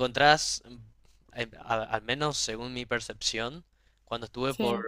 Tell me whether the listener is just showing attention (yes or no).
yes